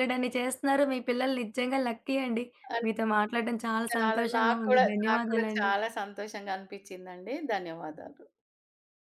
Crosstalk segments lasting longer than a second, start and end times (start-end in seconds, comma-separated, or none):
3.9-5.7